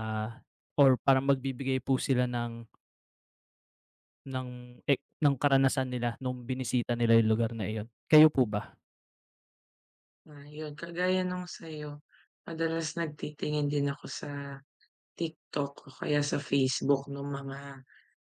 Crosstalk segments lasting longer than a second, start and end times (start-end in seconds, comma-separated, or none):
none